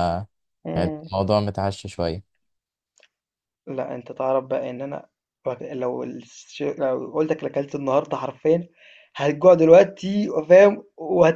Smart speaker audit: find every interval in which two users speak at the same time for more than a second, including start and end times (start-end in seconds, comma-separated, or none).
none